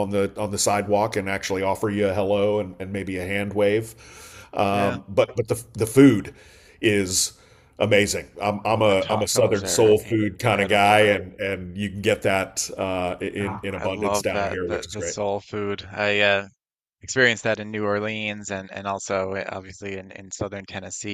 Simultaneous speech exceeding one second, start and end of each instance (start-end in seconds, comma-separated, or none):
8.7-11.1, 13.4-15.2